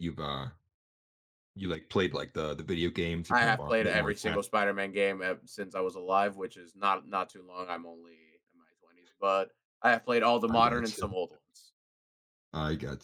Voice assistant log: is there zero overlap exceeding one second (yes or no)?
no